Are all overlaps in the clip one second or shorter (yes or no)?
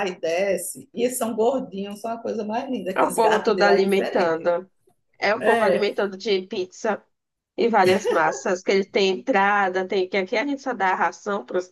no